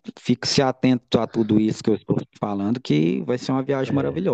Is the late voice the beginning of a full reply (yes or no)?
no